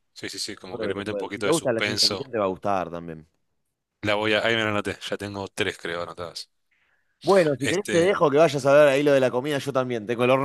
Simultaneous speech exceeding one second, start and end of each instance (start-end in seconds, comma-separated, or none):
0.7-2.3